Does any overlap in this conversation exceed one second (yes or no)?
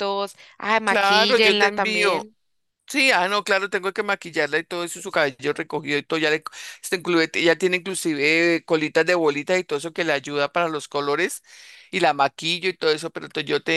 yes